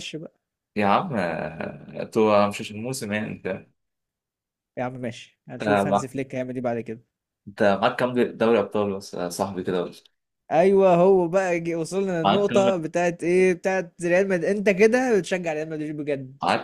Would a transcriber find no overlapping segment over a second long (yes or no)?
yes